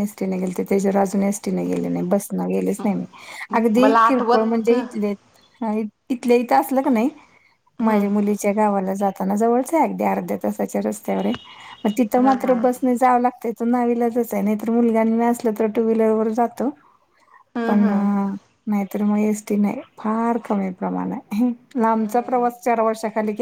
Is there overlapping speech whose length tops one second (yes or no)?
yes